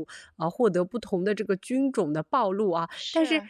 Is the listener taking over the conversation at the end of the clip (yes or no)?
no